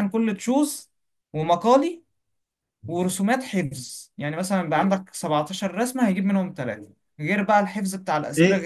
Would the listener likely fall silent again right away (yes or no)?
no